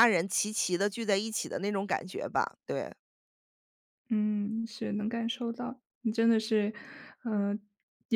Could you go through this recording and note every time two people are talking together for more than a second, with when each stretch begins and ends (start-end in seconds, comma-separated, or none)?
none